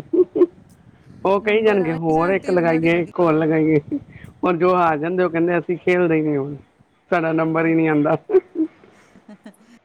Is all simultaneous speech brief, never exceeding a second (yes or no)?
no